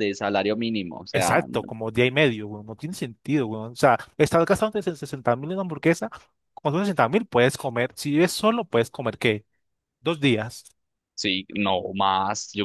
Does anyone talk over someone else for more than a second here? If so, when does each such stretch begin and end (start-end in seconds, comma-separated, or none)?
none